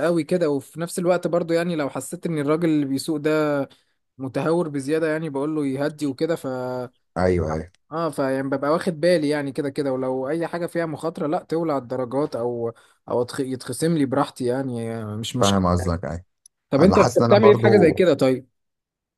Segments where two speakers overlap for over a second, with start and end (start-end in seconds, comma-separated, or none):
16.8-18.0